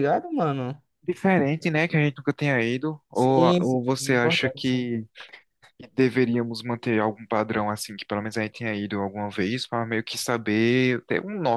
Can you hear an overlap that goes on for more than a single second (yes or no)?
yes